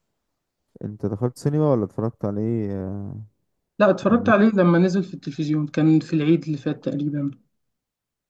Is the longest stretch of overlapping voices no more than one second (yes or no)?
yes